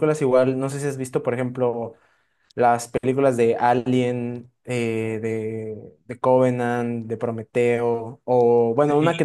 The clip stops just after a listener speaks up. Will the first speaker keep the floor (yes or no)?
yes